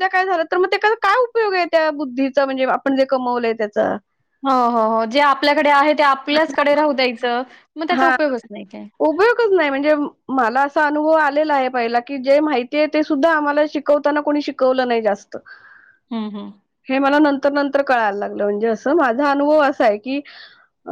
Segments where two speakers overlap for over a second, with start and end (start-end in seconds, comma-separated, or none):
none